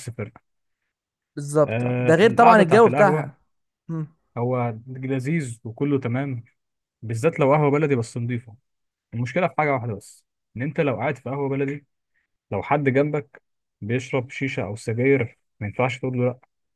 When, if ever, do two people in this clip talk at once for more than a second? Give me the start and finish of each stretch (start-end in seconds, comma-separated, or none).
1.6-3.3